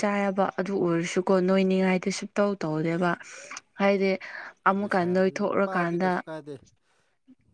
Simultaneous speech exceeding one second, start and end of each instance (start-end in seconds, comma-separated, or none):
4.8-6.2